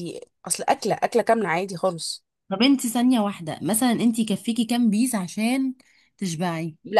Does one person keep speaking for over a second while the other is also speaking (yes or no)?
no